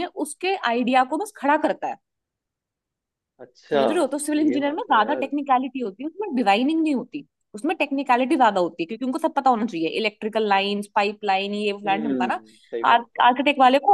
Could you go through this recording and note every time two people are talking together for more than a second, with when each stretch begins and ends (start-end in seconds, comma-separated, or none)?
3.7-5.3